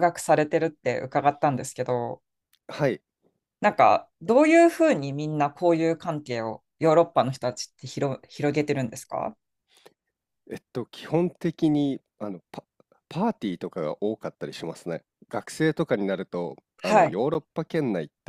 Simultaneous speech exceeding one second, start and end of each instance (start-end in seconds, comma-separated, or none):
none